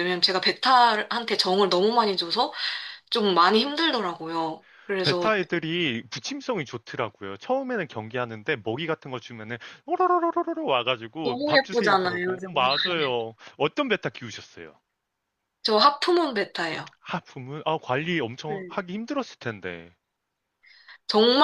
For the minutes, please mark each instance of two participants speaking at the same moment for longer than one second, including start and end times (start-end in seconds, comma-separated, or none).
11.2-12.9